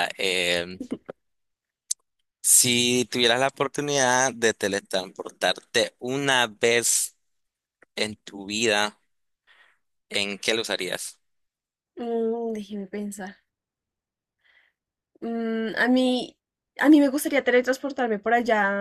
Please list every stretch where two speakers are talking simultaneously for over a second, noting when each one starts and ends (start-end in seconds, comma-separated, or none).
none